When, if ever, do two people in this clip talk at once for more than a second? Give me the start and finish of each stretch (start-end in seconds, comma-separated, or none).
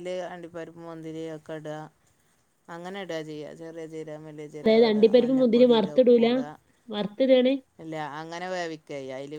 4.6-6.3